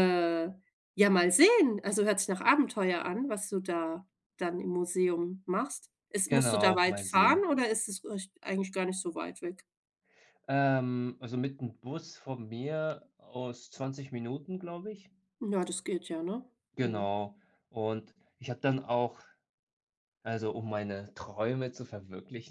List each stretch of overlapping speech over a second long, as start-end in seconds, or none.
6.2-7.5